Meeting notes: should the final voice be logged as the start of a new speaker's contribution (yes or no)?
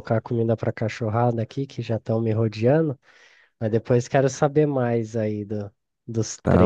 yes